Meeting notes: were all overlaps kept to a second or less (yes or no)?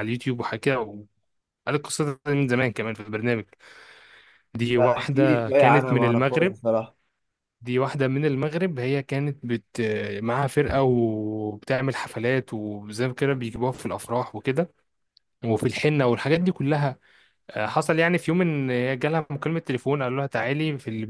no